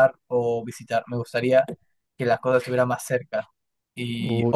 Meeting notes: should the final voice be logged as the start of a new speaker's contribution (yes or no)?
no